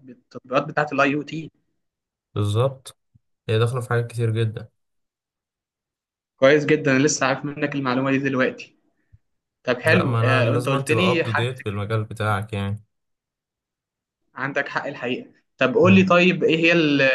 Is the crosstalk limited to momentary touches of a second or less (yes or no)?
no